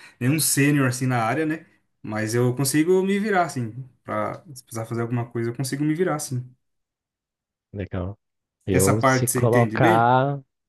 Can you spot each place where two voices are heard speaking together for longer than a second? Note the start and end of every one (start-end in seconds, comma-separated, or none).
8.7-10.1